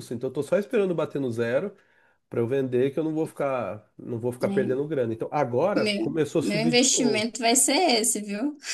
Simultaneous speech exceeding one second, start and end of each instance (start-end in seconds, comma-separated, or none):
5.8-7.3